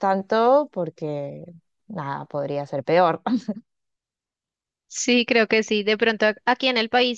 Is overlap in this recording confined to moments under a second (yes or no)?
yes